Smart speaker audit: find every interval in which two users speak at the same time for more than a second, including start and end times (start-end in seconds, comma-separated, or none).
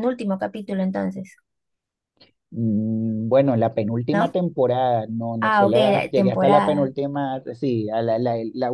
5.4-6.9